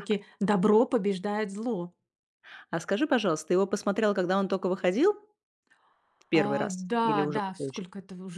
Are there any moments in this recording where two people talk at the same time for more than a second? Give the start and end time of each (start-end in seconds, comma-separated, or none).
6.3-7.8